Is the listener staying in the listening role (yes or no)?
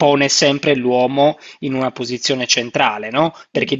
yes